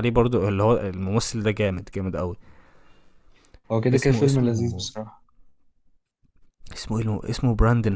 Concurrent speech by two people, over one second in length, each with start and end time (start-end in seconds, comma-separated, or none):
none